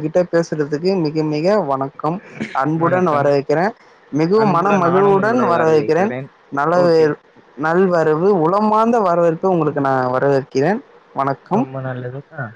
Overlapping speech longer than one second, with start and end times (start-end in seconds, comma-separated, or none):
4.4-6.3